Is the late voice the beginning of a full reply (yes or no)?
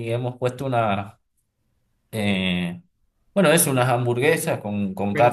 yes